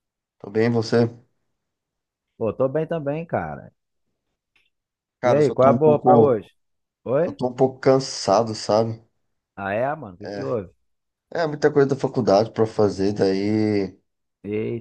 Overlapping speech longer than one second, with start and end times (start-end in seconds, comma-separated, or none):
5.2-6.5